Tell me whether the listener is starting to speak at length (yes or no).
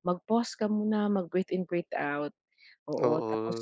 no